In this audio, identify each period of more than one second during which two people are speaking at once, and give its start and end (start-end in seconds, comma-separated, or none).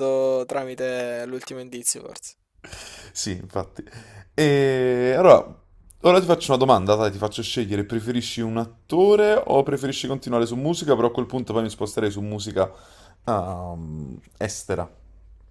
none